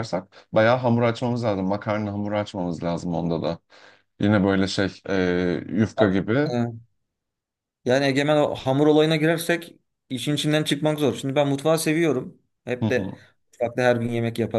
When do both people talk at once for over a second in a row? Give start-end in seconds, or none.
none